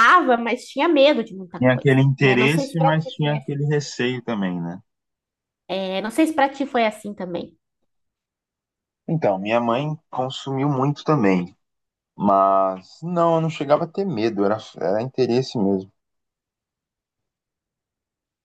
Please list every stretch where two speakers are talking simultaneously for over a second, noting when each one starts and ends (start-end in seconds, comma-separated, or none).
1.6-3.6